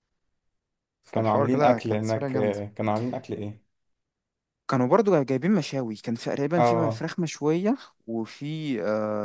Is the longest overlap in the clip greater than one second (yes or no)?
yes